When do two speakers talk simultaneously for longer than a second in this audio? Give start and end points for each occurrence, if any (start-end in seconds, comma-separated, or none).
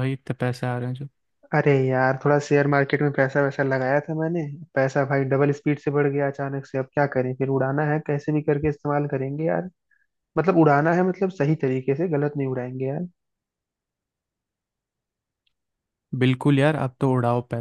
none